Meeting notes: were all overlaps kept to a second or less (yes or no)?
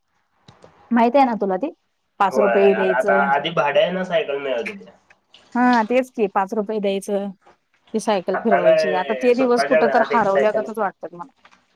no